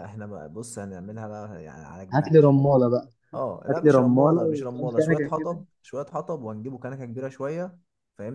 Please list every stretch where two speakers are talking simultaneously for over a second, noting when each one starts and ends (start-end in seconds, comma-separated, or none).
3.7-5.6